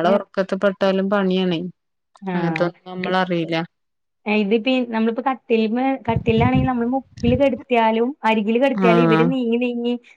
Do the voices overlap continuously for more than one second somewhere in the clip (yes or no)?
no